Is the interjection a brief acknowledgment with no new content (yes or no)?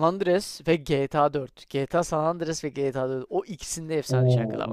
no